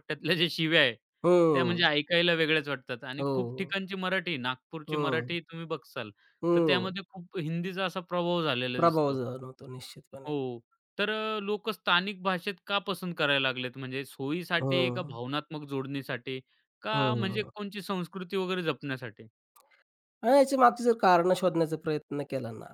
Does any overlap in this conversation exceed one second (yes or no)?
no